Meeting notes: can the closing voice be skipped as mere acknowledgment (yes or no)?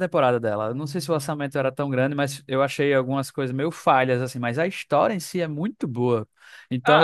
no